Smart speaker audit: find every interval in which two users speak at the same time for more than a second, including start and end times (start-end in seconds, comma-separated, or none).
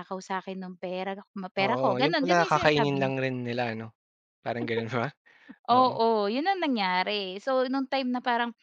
1.6-3.1